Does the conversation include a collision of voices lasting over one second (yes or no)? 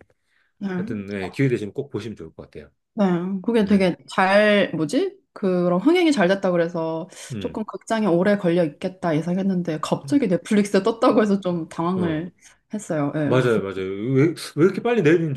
no